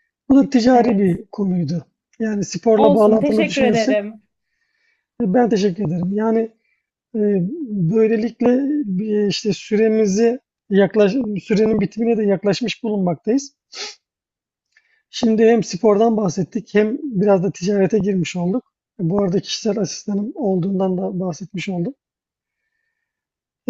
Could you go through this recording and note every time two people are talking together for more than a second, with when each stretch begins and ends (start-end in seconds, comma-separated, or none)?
2.8-4.0